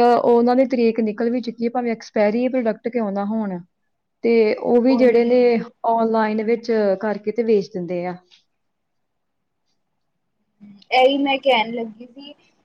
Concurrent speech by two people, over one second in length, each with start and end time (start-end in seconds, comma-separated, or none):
none